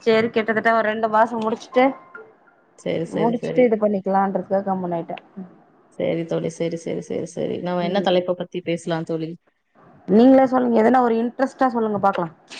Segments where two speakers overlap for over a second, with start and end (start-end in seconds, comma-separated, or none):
none